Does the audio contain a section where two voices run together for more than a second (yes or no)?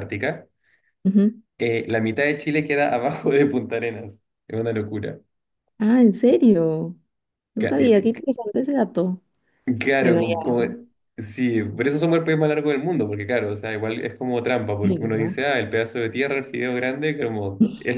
no